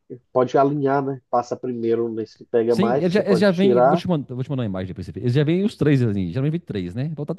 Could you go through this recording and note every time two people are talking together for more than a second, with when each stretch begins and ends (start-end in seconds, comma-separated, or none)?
2.7-4.0